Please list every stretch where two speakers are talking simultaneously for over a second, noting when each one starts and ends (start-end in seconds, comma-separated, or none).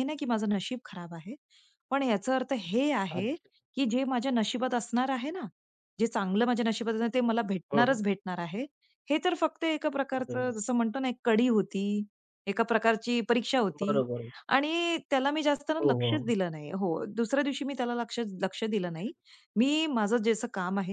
none